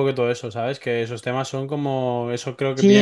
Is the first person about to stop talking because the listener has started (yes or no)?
yes